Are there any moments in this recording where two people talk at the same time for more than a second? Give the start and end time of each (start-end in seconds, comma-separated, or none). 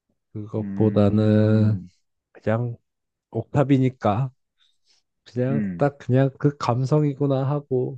0.6-1.8